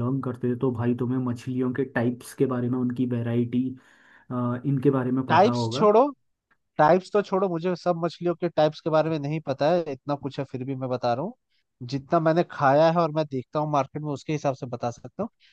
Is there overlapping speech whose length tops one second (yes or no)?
no